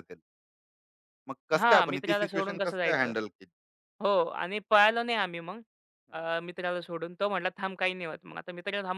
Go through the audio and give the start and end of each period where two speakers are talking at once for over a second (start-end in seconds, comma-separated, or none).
1.6-3.1